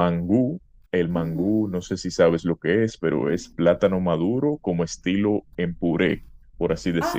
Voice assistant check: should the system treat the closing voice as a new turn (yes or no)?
yes